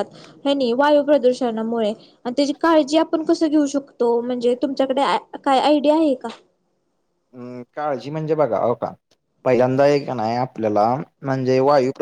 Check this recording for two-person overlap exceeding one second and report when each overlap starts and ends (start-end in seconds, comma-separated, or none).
none